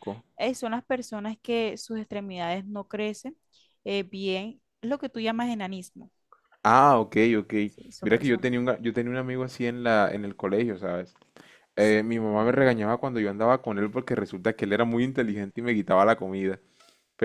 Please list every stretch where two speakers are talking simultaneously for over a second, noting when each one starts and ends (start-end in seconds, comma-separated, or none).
none